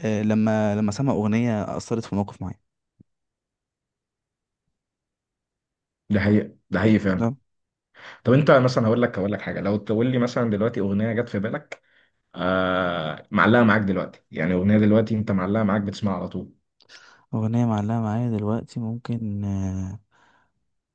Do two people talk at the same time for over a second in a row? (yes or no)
no